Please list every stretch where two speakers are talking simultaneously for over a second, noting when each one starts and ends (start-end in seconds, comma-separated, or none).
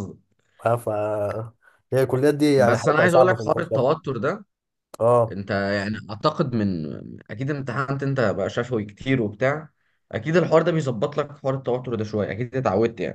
2.6-3.9